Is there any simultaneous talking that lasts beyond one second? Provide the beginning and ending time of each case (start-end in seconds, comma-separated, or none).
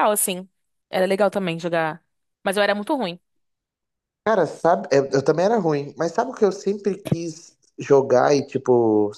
none